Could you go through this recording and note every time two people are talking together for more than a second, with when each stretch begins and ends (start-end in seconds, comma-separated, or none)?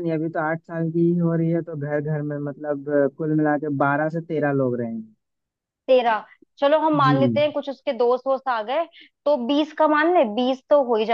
none